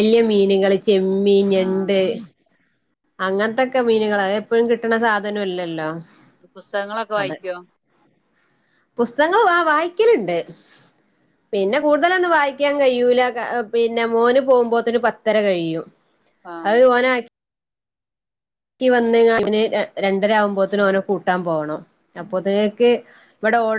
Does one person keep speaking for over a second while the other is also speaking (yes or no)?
no